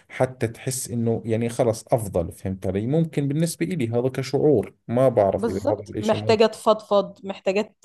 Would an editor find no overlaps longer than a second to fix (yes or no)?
no